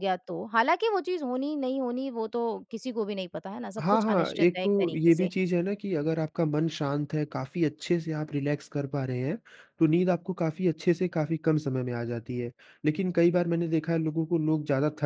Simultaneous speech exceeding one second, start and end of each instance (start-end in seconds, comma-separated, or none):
3.8-5.3